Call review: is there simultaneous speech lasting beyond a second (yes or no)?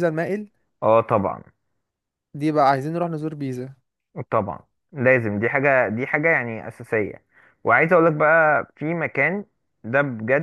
no